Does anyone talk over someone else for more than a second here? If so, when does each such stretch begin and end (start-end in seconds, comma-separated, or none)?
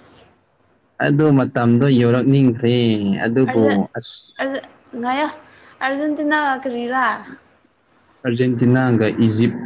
none